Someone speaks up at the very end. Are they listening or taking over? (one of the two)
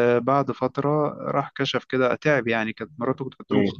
listening